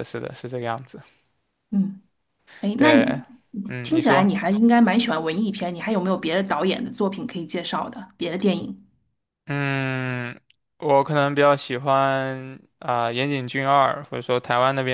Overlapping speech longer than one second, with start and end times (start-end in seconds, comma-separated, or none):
none